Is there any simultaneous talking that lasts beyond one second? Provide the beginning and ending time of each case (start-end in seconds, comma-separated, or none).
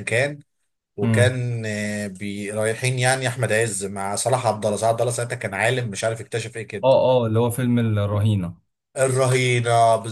none